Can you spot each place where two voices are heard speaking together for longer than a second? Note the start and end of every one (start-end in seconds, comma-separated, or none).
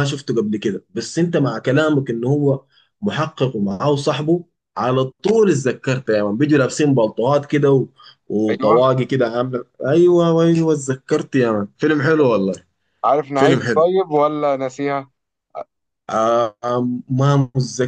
none